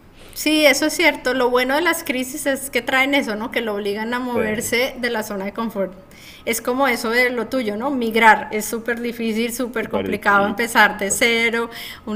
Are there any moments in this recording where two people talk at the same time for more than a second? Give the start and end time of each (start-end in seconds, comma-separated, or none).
9.8-11.2